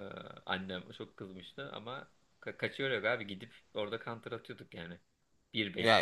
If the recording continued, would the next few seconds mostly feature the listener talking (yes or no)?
yes